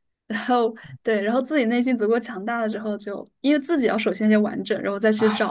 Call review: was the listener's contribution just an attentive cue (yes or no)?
no